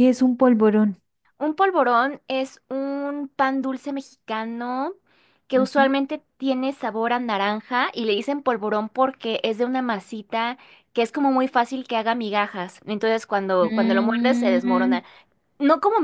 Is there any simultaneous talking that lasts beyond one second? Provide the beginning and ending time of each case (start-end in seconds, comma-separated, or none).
13.6-15.0